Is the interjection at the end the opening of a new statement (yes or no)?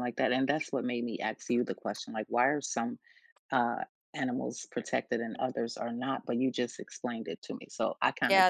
yes